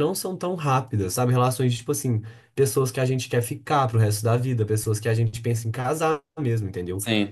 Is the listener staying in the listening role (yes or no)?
yes